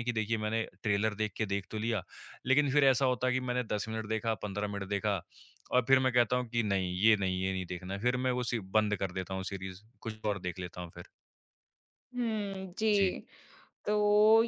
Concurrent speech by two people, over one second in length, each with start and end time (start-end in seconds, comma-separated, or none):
none